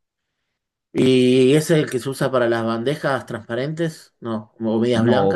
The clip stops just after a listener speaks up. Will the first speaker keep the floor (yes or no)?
no